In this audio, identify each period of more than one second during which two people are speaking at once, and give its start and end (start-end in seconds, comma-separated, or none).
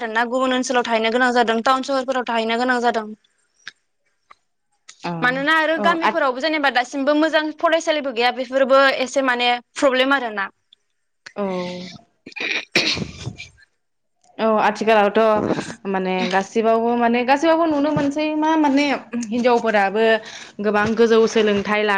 none